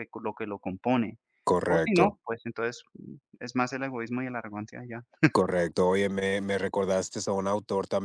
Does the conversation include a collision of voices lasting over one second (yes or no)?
no